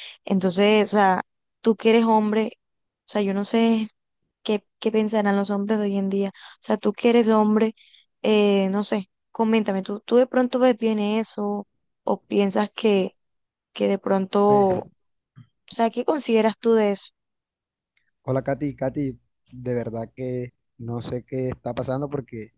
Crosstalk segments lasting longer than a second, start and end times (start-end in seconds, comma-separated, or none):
none